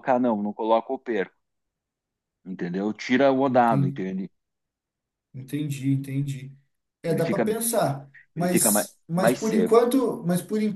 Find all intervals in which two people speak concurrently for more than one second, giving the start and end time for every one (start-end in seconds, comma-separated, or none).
8.3-9.8